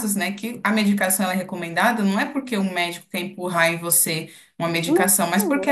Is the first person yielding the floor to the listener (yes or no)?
no